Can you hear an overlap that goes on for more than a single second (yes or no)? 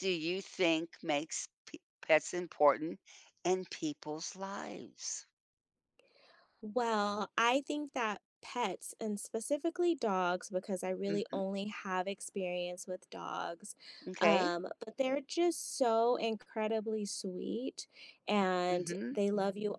no